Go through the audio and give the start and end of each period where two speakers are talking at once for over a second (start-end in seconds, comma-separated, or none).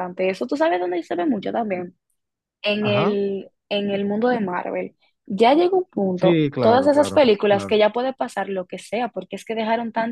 6.2-7.8